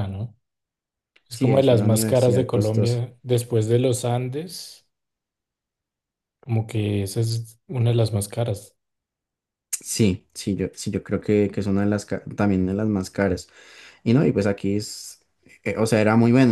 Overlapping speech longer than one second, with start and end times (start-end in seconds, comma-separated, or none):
1.3-3.0